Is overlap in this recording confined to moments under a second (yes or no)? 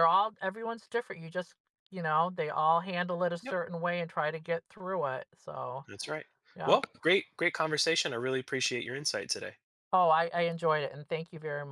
yes